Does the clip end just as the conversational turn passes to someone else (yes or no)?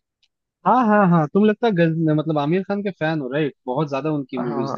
yes